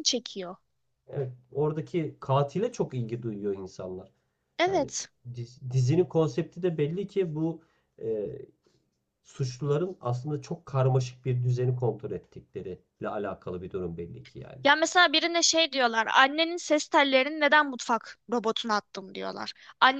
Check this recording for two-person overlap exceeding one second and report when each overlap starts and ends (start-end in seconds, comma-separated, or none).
none